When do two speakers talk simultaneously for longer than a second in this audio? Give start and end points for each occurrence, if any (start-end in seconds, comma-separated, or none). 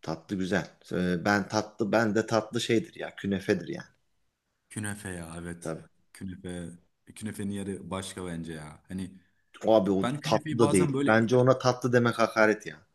10.0-11.3